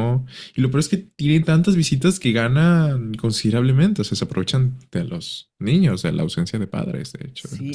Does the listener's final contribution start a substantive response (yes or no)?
yes